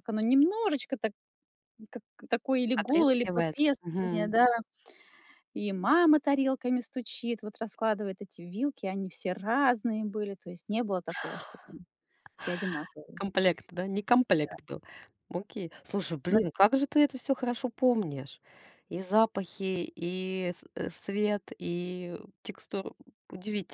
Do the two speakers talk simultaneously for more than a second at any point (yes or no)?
yes